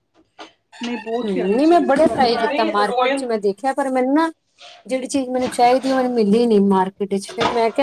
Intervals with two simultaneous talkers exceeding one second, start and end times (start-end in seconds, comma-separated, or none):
1.2-3.2